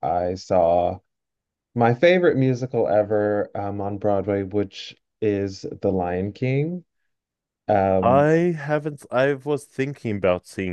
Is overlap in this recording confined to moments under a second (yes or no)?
yes